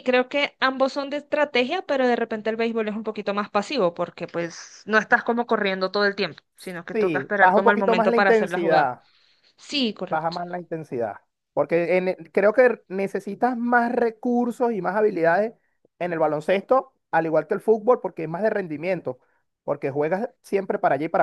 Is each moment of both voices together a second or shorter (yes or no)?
no